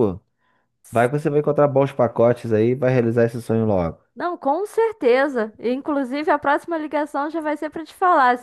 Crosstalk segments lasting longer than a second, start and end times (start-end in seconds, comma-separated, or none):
none